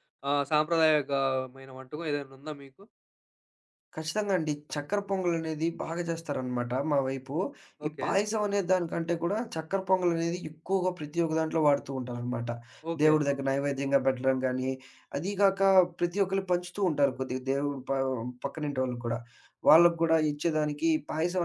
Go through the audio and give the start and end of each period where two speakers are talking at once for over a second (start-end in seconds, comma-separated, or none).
none